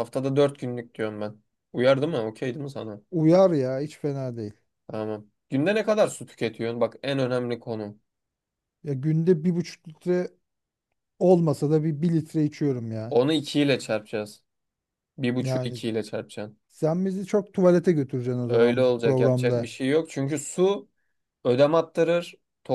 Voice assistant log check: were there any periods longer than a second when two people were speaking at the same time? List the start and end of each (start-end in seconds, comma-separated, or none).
18.5-19.7